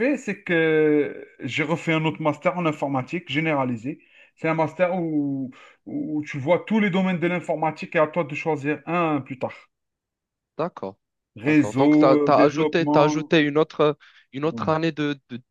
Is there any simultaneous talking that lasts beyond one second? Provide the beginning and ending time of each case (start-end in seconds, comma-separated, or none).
11.4-13.3